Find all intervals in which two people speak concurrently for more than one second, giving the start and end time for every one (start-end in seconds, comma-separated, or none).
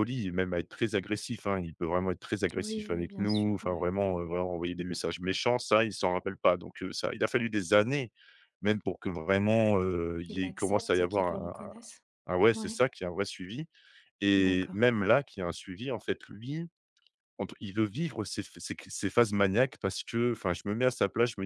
2.6-4.2, 10.2-11.7